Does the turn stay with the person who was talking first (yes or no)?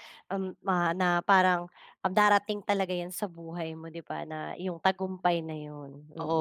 no